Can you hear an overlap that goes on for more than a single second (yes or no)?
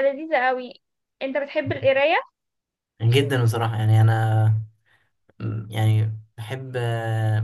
no